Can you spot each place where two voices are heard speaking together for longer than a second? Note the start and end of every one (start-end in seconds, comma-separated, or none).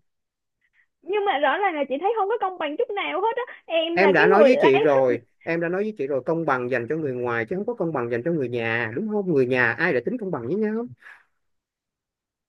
3.9-5.2